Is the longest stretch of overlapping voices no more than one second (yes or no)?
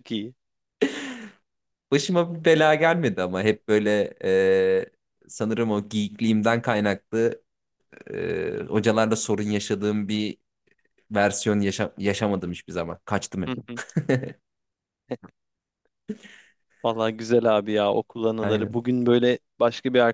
yes